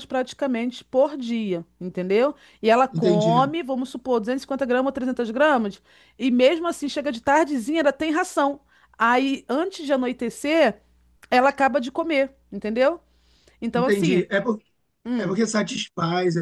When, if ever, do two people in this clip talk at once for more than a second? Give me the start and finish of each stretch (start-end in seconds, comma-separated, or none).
none